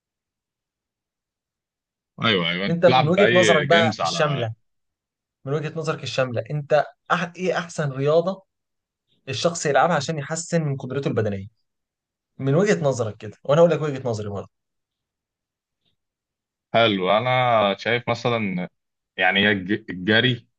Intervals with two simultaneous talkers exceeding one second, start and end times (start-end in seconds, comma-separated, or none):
2.7-4.5